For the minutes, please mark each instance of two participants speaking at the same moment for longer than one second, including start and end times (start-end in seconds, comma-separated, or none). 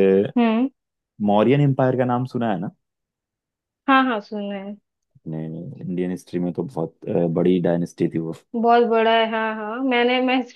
none